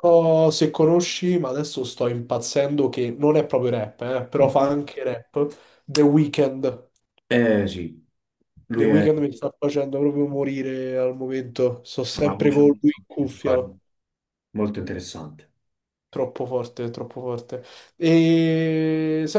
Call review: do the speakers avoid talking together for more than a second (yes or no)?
no